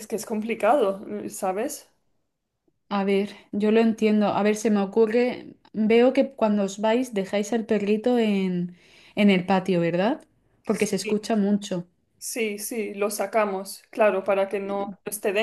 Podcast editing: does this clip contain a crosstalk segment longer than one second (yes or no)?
no